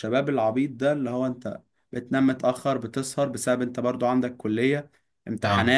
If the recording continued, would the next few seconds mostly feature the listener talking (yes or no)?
no